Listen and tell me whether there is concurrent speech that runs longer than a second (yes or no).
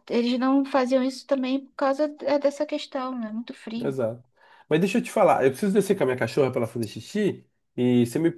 no